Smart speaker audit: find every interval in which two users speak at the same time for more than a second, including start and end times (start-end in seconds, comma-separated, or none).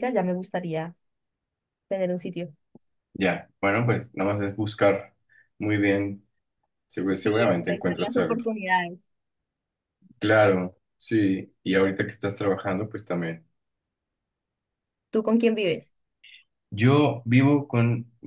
7.1-8.4